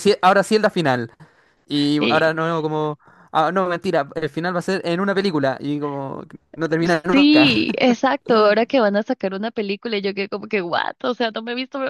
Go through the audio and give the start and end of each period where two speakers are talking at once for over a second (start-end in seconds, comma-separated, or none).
none